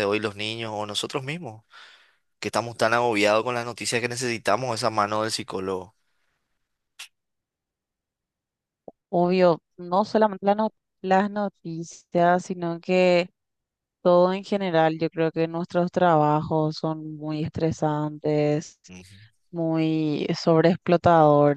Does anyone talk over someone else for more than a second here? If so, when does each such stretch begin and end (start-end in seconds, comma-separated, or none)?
none